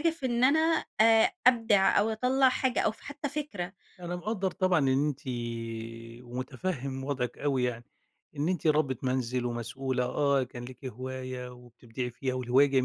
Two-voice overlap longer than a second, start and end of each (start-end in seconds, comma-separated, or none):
none